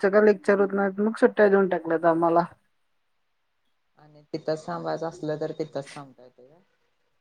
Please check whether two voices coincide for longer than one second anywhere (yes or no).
no